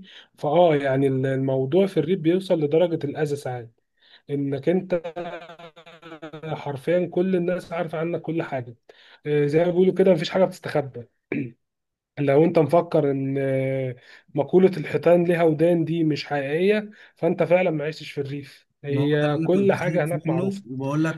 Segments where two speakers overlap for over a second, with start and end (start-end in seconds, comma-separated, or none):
18.9-20.6